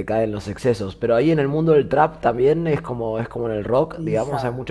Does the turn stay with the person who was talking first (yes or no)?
no